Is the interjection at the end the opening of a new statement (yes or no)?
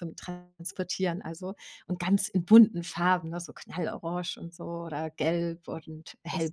no